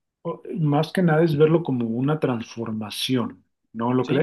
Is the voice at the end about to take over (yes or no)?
yes